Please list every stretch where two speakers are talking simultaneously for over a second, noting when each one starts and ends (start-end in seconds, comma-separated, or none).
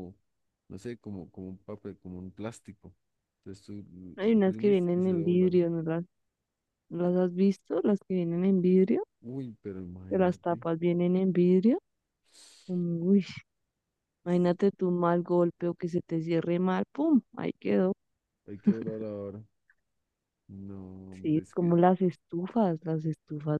4.3-5.6